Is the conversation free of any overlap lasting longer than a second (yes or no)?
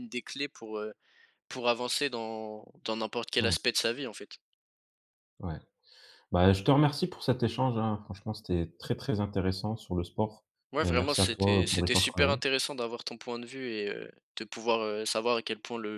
no